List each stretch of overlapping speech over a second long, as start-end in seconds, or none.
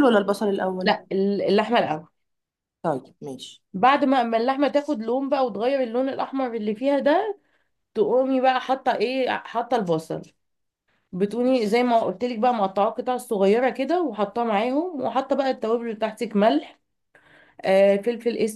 none